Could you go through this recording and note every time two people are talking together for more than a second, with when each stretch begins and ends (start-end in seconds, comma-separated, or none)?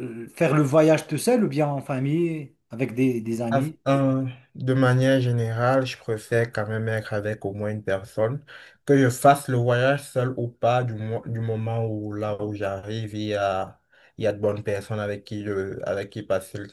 none